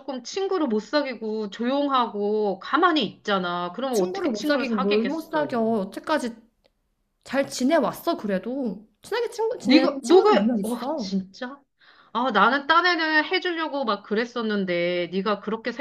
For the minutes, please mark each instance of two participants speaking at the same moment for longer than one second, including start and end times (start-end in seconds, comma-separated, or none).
3.9-5.6, 9.6-11.1